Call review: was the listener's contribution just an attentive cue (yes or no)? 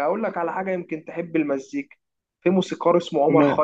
yes